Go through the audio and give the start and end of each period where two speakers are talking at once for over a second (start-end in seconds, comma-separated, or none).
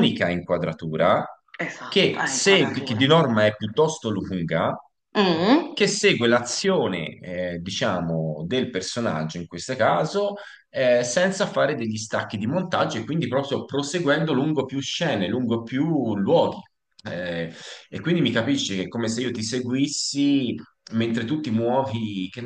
1.9-3.1